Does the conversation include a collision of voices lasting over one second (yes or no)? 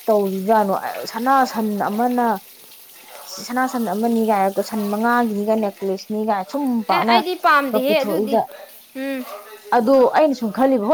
yes